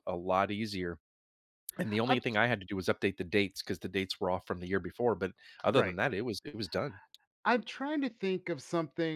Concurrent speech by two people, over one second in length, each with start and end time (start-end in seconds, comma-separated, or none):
none